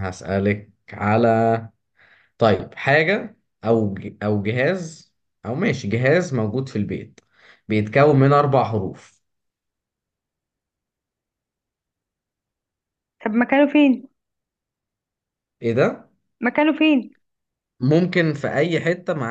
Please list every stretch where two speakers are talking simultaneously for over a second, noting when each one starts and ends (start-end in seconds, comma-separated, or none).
none